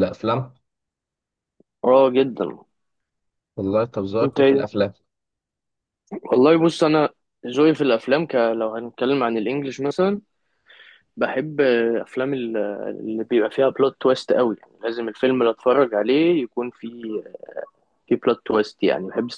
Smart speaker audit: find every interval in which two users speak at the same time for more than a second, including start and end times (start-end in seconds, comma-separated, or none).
none